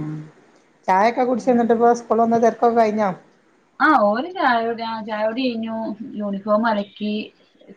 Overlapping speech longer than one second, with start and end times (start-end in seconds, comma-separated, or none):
none